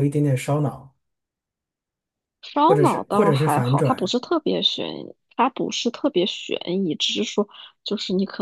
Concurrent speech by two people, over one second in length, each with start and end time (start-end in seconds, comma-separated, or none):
2.7-4.2